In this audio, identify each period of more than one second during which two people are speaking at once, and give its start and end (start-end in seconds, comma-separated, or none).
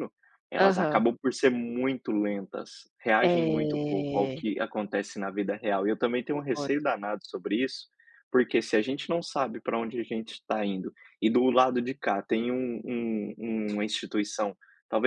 3.2-4.4